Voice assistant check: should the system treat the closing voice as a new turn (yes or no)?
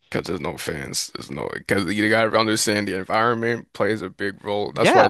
yes